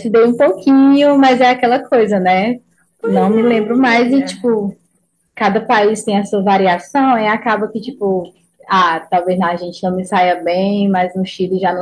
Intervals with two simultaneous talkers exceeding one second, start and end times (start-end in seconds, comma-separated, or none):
3.0-4.5